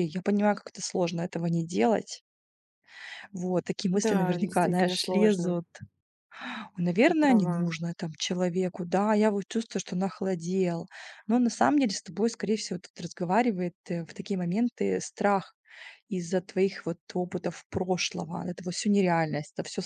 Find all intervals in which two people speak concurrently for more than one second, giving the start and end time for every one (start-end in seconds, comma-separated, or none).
3.9-5.6